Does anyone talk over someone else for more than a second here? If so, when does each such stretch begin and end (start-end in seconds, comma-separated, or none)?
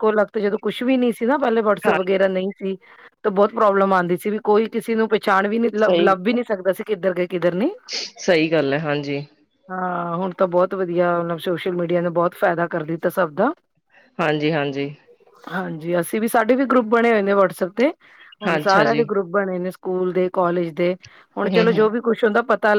none